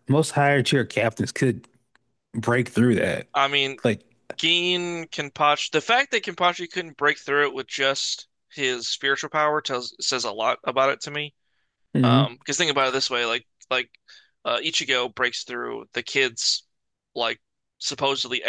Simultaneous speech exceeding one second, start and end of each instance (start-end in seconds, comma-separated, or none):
none